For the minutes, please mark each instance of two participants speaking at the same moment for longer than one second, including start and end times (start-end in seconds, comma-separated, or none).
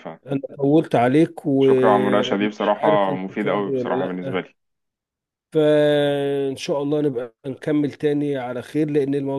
1.6-4.5